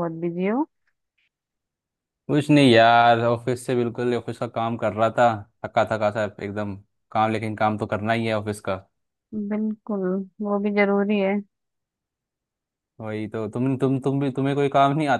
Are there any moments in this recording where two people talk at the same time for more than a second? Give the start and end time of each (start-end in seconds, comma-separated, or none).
none